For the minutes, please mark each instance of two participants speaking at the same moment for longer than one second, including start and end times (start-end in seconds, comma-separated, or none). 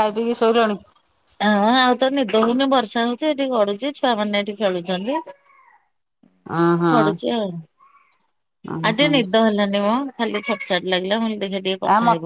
none